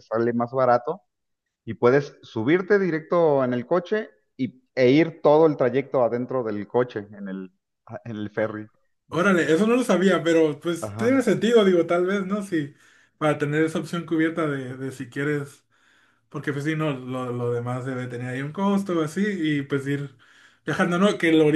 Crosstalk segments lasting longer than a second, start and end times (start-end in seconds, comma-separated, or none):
none